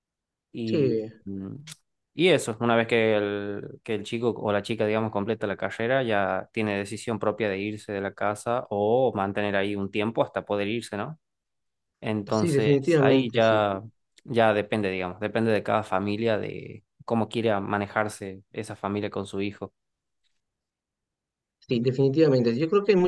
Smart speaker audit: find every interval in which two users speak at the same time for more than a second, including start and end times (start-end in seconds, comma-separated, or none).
12.3-13.6